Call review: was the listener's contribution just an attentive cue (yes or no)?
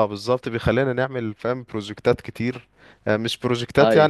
yes